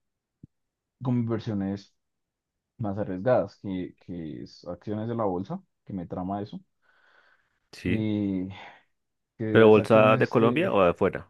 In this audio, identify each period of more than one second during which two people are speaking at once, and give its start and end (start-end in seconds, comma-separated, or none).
9.5-10.7